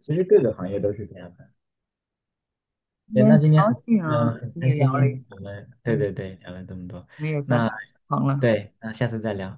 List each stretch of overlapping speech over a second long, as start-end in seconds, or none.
3.1-4.9